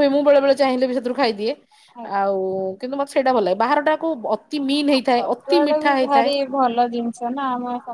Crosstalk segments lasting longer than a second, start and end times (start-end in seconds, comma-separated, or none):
none